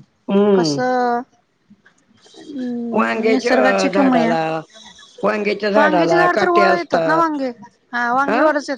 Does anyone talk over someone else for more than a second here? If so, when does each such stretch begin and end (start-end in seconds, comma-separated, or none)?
3.0-4.3, 5.8-7.4